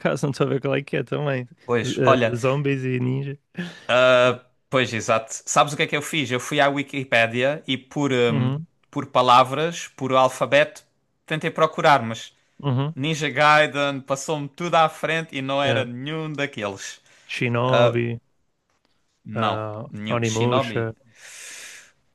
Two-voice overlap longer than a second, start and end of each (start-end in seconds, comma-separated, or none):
19.4-20.9